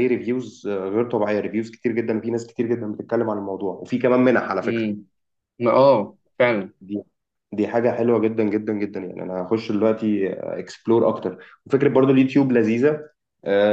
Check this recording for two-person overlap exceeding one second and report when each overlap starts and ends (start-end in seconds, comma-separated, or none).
none